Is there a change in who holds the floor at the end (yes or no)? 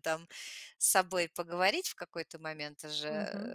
yes